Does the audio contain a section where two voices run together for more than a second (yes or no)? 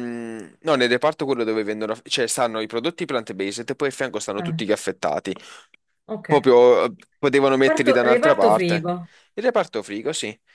yes